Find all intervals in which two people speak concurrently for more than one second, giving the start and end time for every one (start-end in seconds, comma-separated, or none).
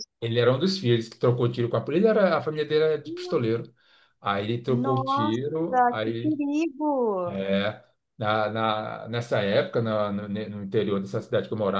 4.7-6.4